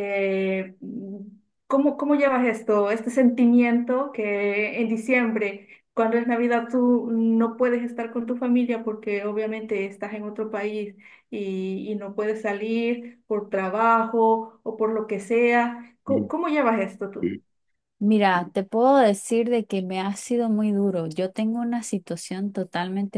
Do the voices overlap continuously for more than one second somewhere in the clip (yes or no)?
no